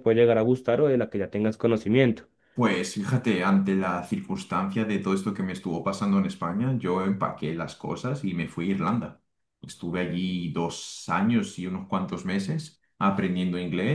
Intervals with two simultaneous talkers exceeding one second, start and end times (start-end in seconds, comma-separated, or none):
none